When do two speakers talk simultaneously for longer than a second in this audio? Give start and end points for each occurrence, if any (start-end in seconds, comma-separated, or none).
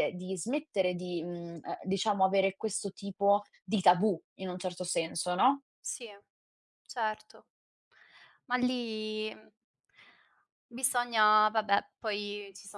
none